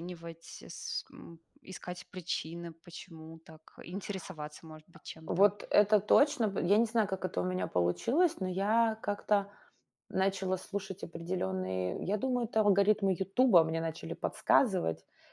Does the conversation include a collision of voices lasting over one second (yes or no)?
no